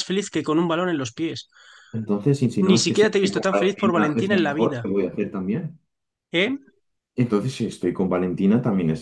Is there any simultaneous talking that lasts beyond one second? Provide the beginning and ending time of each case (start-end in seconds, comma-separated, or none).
2.6-4.9